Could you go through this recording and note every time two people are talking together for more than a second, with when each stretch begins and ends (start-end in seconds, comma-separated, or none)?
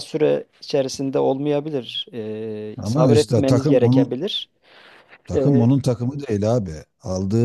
2.8-4.1